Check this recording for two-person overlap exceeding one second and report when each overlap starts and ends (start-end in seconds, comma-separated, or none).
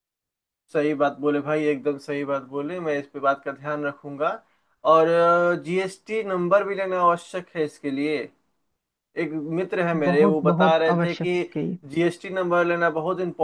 10.1-11.4